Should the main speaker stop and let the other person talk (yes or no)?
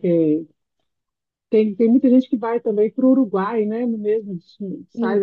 no